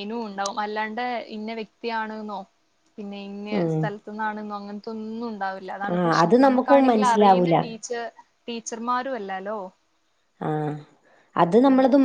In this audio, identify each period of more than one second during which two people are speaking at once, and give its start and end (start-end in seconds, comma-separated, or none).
5.9-7.6